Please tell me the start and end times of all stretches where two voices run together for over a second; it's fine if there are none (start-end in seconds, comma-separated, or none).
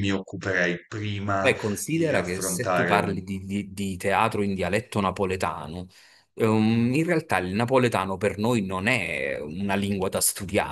1.4-3.2